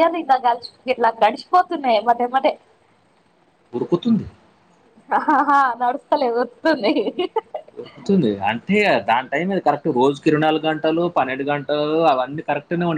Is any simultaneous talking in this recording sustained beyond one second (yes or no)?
no